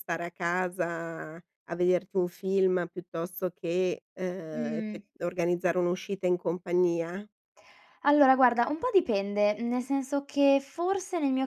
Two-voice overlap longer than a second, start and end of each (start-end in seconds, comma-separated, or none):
none